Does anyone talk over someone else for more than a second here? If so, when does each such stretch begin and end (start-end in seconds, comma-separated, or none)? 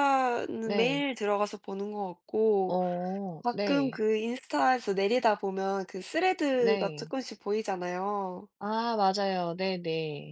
none